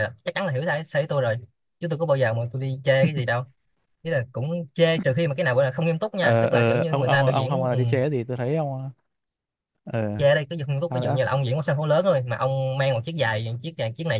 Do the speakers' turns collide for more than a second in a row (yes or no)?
yes